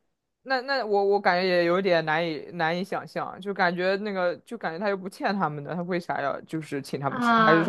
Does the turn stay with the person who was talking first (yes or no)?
no